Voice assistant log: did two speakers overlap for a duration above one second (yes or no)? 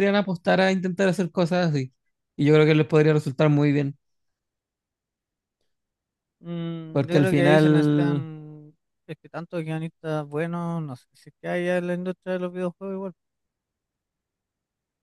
yes